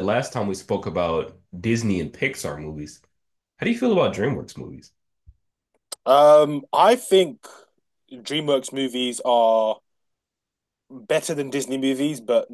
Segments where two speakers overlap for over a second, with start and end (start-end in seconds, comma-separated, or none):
none